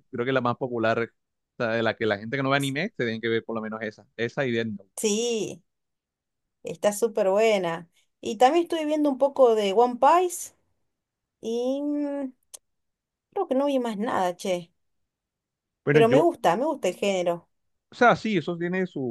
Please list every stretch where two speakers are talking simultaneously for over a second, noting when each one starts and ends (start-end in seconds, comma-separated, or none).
none